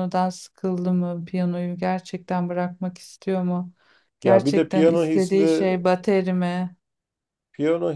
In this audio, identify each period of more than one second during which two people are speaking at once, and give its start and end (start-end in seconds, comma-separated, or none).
4.2-5.7